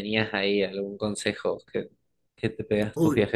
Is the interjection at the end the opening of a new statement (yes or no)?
yes